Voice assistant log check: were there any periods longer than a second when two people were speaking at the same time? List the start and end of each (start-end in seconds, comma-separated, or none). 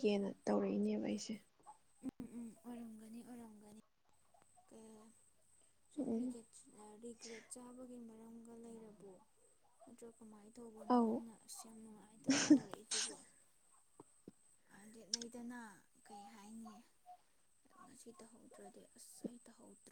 none